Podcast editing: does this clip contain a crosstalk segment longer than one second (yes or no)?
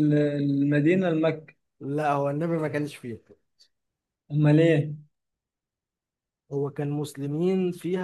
no